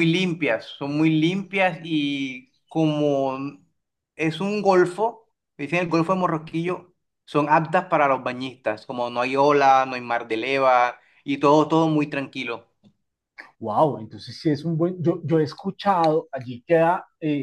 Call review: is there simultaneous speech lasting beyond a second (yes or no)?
no